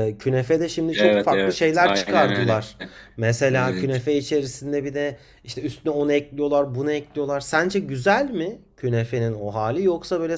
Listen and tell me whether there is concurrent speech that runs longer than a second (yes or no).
yes